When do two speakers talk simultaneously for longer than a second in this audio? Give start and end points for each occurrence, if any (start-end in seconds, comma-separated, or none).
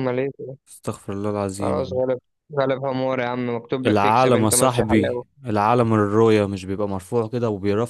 3.9-5.2